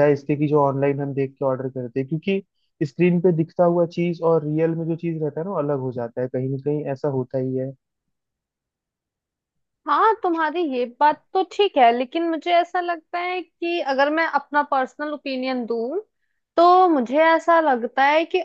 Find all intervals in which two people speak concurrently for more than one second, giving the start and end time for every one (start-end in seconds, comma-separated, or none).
none